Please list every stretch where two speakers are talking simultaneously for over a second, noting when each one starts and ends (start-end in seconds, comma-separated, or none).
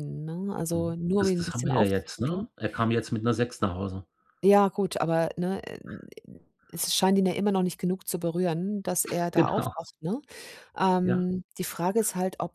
0.7-2.5